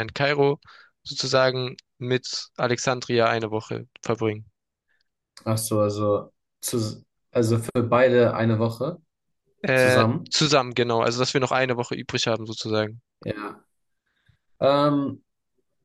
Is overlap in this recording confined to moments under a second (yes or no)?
yes